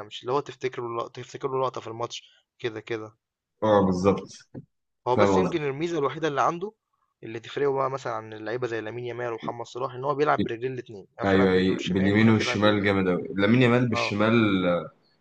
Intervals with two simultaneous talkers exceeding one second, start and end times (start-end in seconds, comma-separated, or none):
11.2-13.0